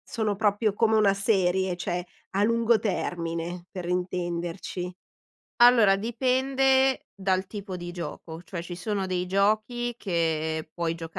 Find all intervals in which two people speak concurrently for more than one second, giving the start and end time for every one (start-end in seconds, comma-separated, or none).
none